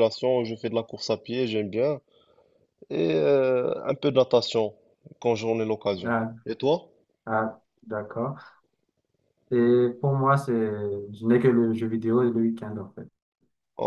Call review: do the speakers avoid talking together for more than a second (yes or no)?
yes